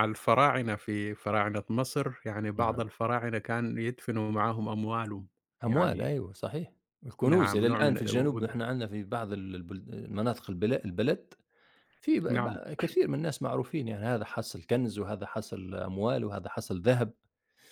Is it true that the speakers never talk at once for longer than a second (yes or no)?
no